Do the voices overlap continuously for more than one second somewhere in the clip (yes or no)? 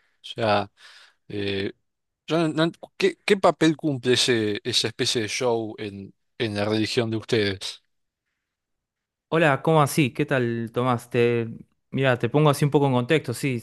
no